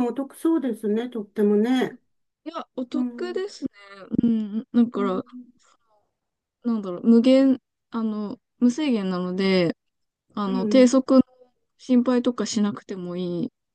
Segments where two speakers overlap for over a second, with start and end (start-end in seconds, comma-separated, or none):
none